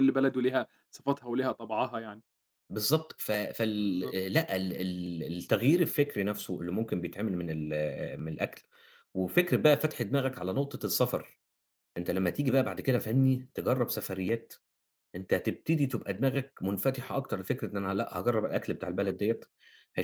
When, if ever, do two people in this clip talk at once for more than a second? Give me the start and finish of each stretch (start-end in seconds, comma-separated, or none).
none